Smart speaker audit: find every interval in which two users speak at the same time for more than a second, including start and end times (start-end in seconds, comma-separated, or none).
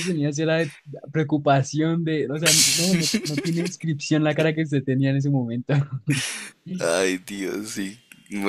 none